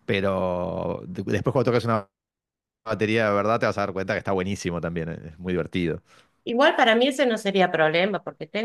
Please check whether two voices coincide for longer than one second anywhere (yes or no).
no